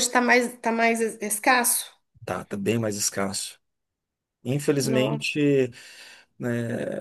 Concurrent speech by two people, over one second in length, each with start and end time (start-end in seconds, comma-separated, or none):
none